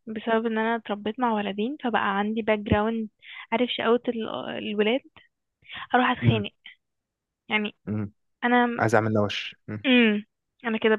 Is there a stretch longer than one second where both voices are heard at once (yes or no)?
no